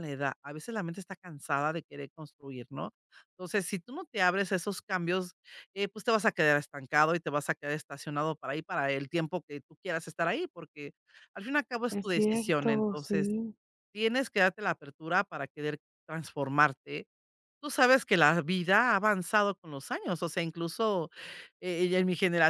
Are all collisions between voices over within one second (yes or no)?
no